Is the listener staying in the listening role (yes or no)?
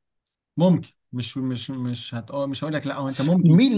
no